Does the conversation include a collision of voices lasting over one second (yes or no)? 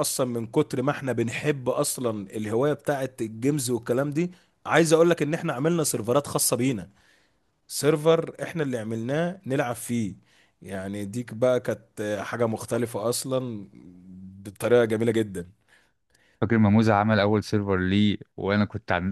no